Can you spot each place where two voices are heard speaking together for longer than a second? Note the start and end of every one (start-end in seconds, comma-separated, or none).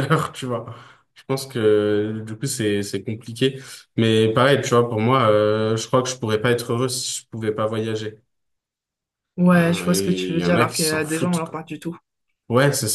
9.5-11.6